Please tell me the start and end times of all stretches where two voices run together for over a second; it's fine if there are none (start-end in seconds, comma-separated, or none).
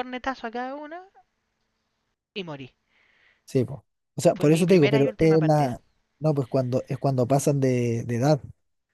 4.3-5.7